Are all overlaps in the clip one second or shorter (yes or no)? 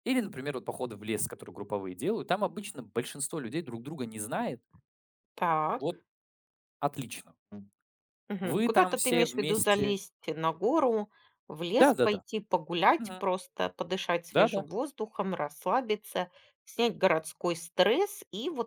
no